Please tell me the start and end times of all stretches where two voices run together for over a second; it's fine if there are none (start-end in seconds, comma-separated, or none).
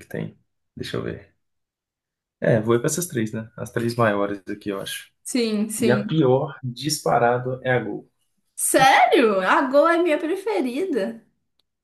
none